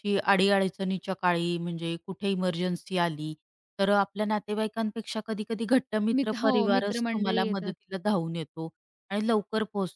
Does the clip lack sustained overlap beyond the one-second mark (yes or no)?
no